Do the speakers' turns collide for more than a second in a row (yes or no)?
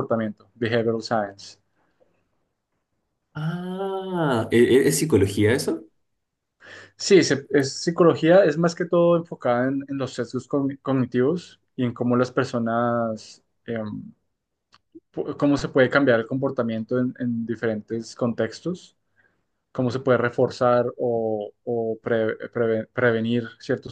no